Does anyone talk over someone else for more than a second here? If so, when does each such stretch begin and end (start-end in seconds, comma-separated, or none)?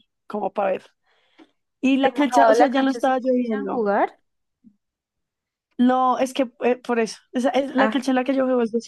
2.0-3.8